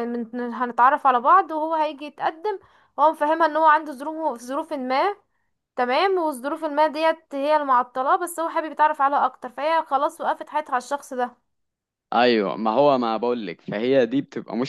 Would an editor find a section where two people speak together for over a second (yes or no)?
no